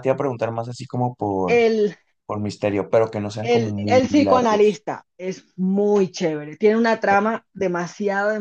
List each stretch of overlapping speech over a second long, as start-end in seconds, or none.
3.4-4.8